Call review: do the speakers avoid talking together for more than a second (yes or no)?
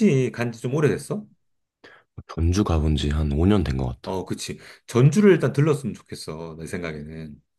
yes